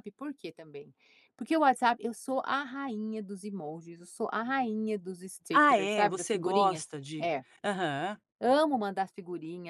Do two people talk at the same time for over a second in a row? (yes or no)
yes